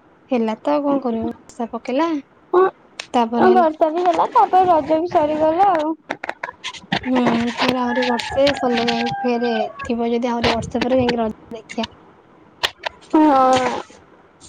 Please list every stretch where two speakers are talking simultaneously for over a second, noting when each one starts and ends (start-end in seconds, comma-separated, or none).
none